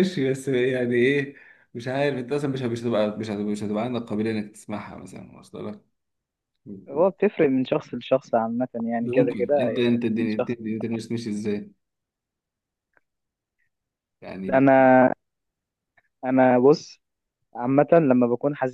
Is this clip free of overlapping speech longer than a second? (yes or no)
no